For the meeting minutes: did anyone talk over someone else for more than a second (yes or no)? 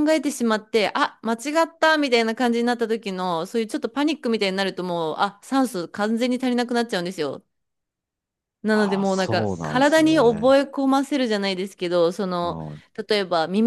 yes